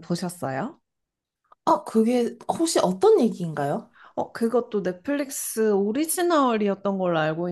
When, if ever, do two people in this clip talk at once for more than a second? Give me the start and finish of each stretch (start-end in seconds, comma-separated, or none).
none